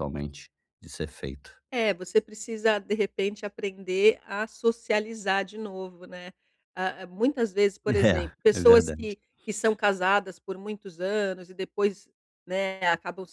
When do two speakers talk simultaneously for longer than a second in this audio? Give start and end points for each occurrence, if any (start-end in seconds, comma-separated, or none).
7.9-9.1